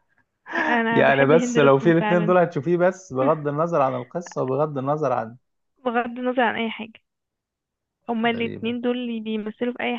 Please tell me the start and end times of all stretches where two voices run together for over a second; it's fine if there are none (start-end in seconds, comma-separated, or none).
0.9-2.3